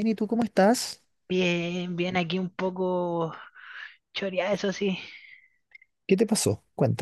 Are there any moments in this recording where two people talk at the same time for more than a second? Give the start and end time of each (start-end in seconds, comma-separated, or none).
none